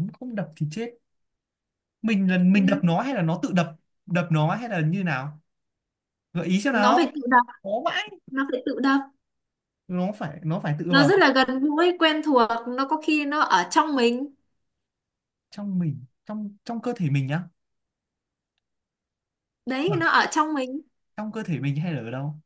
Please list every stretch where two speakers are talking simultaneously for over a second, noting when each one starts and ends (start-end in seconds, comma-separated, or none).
none